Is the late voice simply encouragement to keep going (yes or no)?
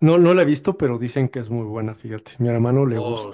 no